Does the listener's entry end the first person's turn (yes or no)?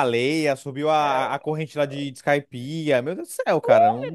yes